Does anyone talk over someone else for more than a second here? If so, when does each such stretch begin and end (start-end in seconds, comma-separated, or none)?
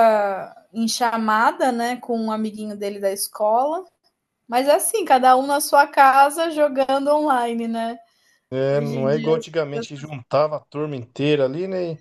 8.7-10.1